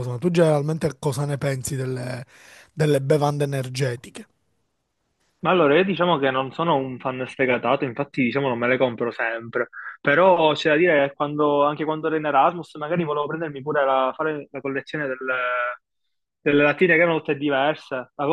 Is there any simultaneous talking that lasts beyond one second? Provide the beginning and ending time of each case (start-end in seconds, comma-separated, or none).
none